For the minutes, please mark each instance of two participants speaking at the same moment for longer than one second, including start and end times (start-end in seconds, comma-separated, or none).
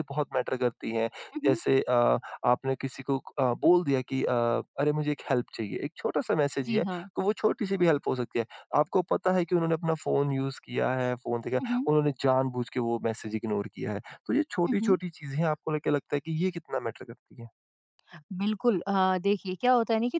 none